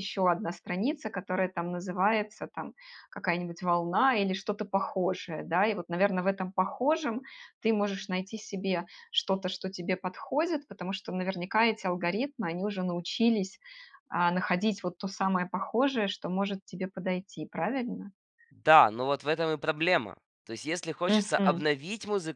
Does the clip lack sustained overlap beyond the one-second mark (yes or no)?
yes